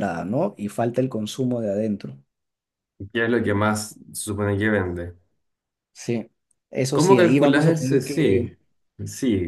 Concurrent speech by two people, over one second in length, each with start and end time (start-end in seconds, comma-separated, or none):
6.9-8.6